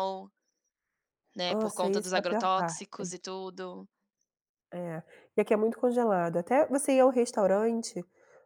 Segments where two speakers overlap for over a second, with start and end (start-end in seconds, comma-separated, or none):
1.5-2.9